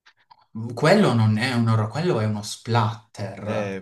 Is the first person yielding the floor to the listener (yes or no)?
yes